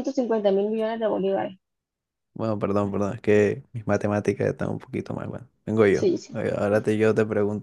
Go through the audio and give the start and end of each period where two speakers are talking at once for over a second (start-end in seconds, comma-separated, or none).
none